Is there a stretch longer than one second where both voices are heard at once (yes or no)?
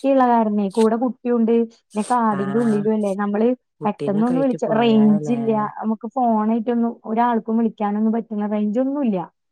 yes